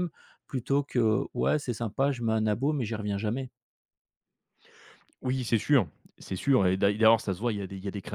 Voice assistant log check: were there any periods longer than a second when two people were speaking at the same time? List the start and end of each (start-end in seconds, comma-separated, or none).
none